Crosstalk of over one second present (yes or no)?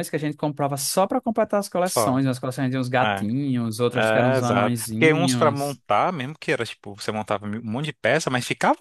yes